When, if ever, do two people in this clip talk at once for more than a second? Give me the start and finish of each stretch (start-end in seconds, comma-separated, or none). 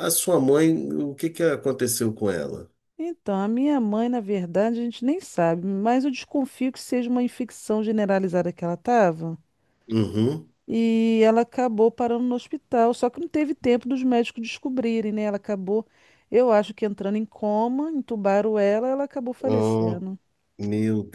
none